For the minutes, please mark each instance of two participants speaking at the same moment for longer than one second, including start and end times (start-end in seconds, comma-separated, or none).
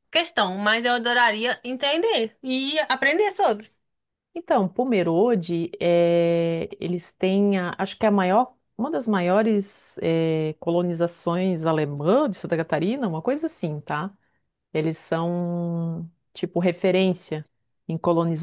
none